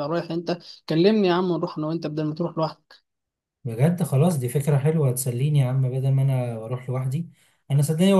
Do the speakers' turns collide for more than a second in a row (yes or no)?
no